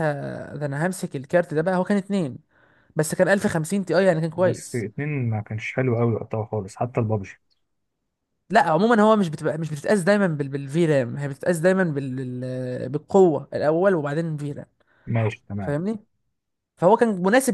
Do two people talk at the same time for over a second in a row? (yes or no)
no